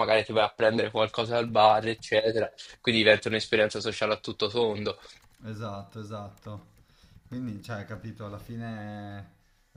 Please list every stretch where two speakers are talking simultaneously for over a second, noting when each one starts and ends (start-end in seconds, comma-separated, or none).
none